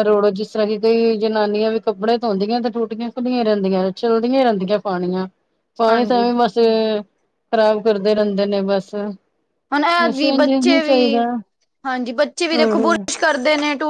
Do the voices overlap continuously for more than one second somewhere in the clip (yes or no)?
yes